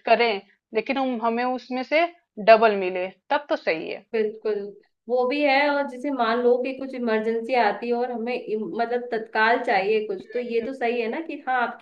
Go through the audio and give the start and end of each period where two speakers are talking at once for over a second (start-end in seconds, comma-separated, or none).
none